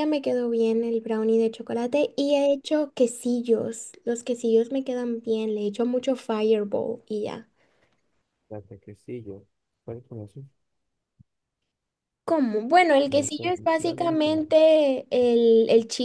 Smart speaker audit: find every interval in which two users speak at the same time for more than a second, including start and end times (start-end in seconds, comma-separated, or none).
13.1-14.4